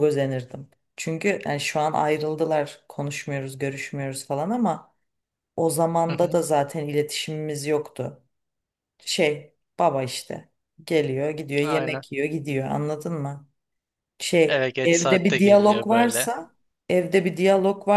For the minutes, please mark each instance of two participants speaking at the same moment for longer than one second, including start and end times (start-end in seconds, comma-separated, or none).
14.5-16.3